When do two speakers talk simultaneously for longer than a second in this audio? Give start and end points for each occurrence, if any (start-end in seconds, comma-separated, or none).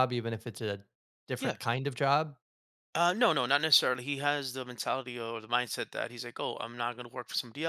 none